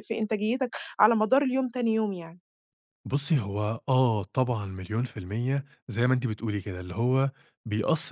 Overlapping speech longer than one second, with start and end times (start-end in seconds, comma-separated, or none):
none